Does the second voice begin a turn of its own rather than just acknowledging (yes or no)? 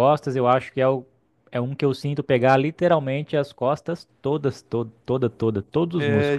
yes